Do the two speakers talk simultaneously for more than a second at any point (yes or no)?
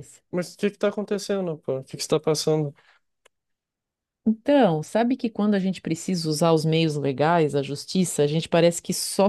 no